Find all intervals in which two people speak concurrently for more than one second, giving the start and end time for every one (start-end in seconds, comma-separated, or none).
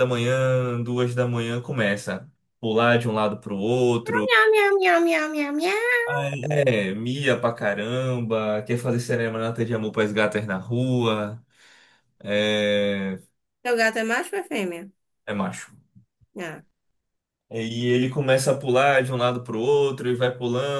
none